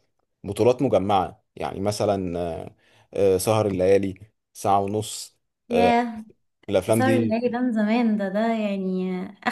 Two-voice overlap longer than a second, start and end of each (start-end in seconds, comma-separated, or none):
none